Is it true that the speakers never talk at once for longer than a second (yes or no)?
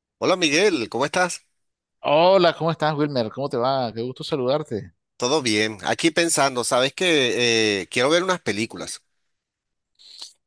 yes